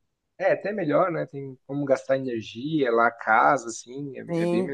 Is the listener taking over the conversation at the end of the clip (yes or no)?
yes